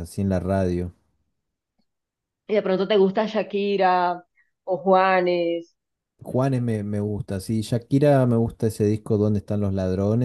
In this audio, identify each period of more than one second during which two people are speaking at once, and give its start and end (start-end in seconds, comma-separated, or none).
none